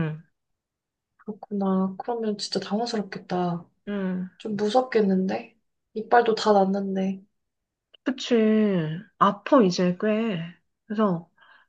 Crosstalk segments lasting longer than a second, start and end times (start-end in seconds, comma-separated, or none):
none